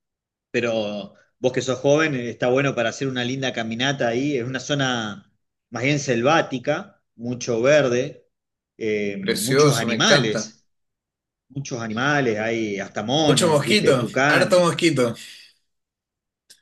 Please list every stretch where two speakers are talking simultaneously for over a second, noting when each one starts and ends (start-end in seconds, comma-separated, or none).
9.2-10.5, 13.2-14.8